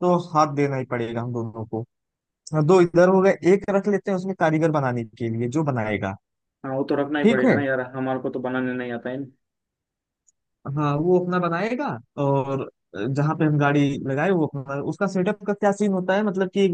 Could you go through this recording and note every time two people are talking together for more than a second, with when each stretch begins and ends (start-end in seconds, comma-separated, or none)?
none